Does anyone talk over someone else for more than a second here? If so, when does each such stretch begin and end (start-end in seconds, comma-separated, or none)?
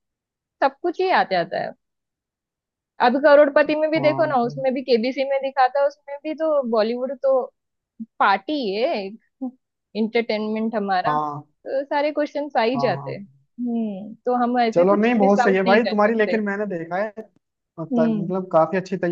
14.7-16.4